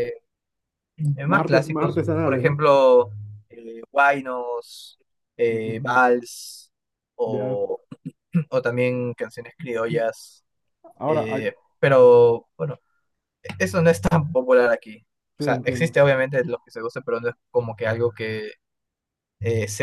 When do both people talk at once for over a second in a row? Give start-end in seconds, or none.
1.3-2.6